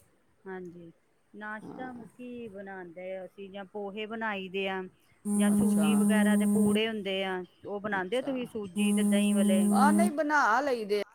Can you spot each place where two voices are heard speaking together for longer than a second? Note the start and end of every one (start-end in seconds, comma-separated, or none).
none